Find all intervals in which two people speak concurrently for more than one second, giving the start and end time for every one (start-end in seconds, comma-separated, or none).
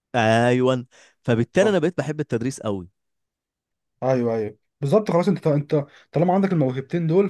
none